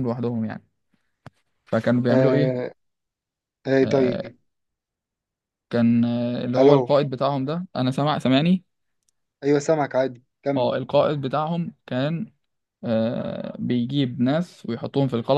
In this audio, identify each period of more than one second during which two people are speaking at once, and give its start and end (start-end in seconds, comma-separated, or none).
none